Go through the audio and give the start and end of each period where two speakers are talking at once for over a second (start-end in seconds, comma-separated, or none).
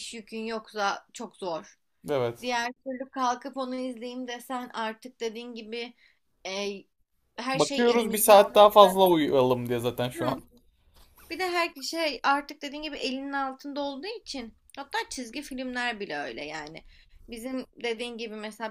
7.5-8.9